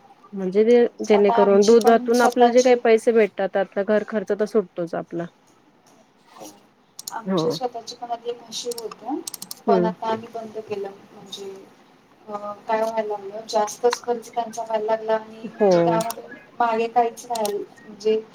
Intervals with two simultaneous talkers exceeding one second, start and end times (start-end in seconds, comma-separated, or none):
1.2-2.8